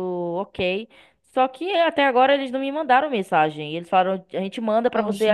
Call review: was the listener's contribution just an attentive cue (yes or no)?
yes